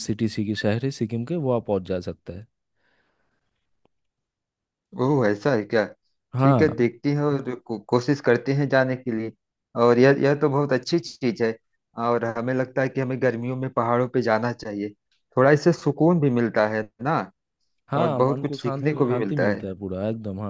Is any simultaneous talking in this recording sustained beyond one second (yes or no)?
yes